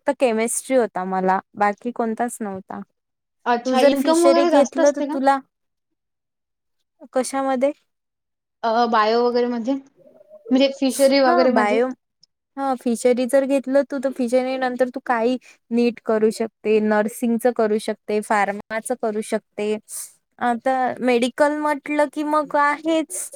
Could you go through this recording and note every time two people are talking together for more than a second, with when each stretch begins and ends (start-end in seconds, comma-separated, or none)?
3.6-5.2